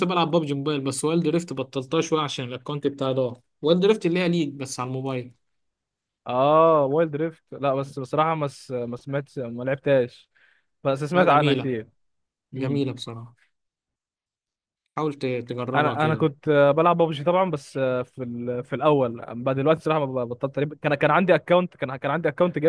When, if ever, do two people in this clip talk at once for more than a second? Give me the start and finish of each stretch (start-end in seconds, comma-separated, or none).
none